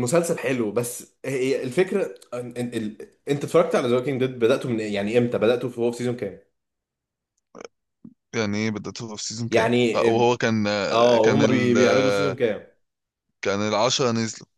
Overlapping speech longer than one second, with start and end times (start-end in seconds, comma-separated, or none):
10.9-12.4